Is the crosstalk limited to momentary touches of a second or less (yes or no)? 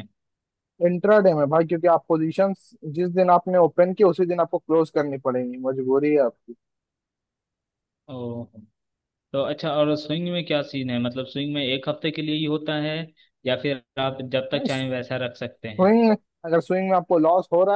yes